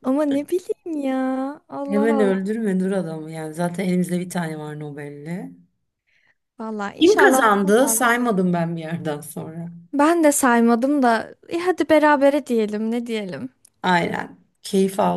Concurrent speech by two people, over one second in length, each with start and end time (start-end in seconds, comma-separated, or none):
7.0-8.3